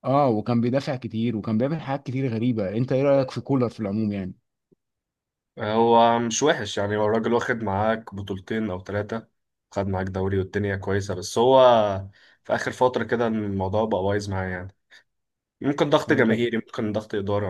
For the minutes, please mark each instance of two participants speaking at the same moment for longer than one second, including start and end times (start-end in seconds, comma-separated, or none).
none